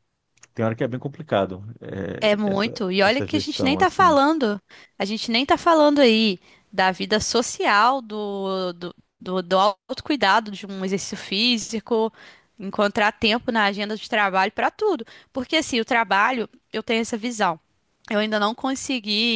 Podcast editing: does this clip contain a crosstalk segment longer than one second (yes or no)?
yes